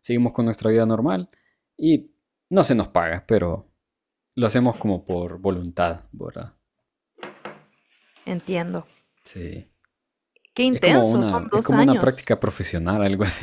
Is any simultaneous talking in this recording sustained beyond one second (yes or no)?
yes